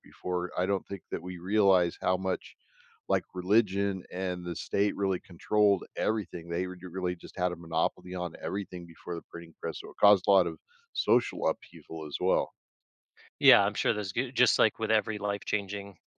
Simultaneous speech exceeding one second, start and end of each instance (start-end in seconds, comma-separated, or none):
none